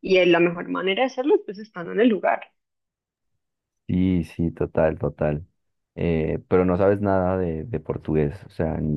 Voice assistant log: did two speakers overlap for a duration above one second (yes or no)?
no